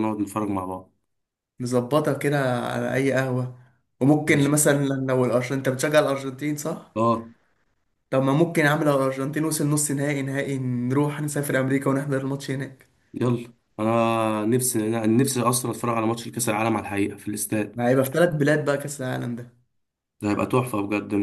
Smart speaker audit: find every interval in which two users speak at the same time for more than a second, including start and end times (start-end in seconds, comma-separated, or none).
none